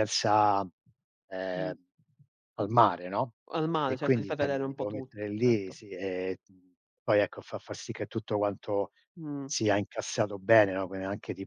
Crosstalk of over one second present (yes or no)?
yes